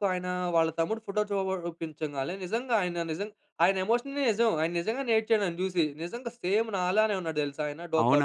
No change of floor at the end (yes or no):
no